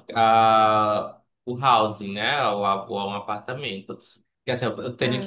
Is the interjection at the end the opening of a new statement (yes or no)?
no